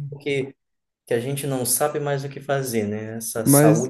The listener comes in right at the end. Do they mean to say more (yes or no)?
no